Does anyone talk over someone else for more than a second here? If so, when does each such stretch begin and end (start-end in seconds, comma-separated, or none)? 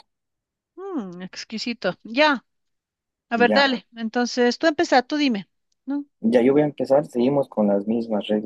none